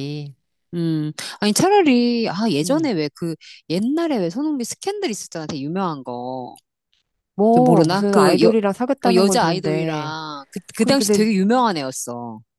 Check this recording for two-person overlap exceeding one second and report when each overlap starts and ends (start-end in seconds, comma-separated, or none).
7.5-10.2